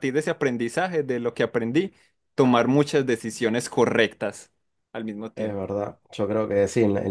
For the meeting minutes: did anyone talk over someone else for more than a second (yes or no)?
no